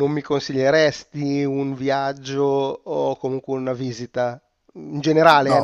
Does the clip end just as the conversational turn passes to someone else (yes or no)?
no